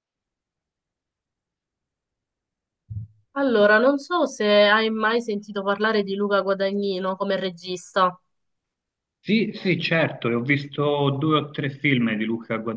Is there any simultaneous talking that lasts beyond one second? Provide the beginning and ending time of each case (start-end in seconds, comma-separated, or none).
none